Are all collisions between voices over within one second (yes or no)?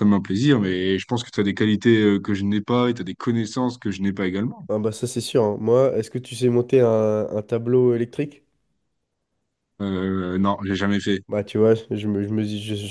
yes